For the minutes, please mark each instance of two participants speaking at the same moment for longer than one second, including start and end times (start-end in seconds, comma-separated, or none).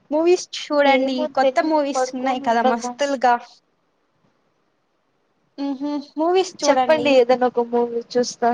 0.9-2.9